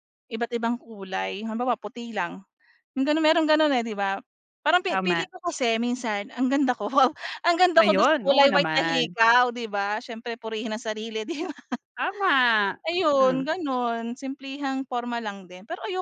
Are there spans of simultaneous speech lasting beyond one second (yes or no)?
yes